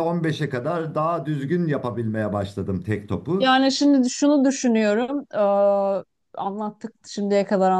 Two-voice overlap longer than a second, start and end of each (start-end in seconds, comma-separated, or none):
none